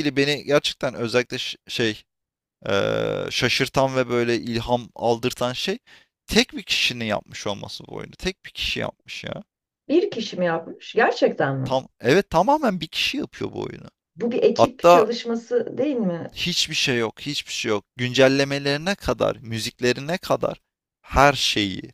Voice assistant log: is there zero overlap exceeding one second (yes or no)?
yes